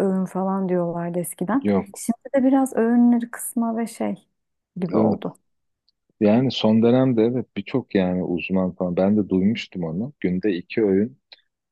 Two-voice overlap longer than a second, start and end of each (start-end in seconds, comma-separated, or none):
none